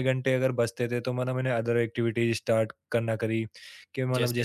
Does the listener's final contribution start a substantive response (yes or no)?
no